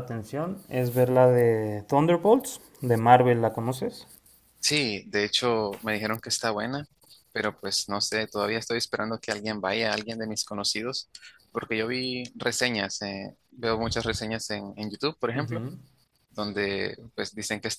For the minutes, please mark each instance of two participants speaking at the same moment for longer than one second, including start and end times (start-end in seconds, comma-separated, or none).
none